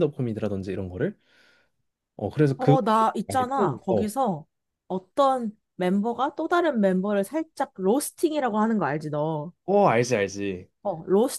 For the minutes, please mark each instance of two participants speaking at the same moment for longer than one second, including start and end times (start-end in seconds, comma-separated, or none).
2.6-4.1